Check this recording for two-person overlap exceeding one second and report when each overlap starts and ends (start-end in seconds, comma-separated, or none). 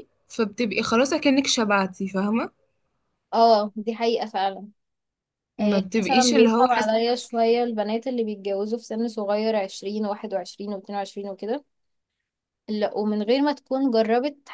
5.6-7.6